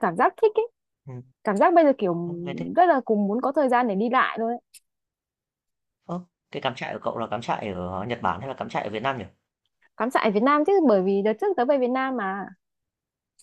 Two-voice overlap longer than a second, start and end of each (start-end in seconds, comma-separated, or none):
none